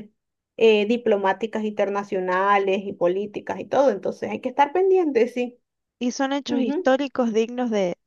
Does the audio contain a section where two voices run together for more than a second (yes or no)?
no